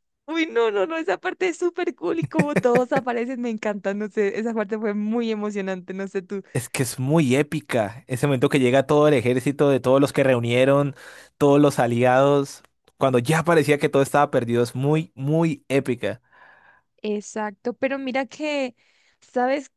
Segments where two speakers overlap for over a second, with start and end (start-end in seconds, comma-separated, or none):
none